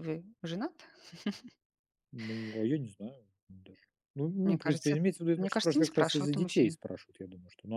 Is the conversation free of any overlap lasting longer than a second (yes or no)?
no